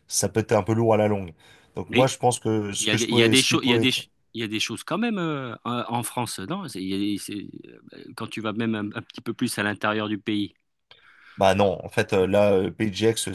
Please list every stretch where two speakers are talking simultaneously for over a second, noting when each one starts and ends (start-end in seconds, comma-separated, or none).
2.8-4.0